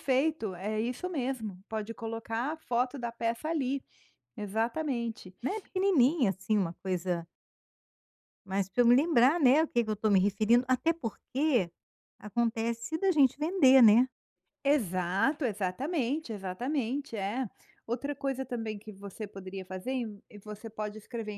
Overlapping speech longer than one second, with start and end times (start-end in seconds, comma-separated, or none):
none